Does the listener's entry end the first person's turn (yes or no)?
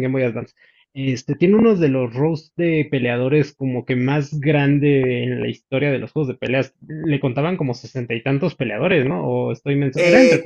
yes